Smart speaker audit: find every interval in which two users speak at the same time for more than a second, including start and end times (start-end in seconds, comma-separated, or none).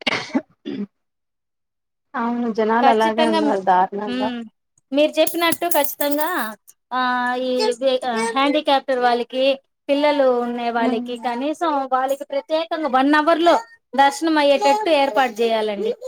2.8-4.3